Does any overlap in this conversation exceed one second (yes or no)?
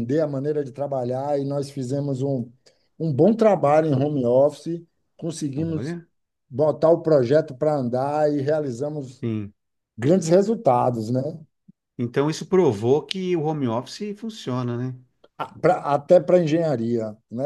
no